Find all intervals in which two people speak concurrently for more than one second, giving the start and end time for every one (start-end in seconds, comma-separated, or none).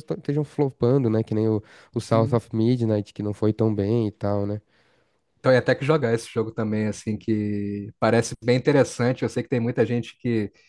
none